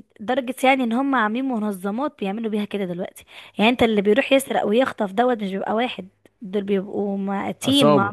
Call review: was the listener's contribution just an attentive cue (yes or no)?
yes